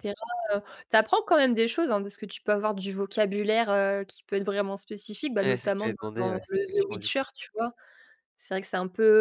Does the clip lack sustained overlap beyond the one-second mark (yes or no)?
no